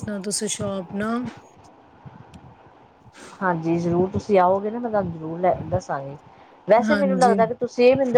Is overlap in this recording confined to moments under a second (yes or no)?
yes